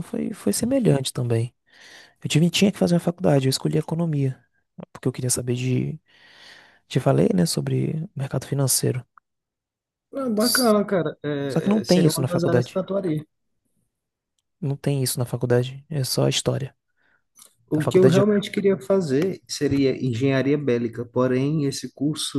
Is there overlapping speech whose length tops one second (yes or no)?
yes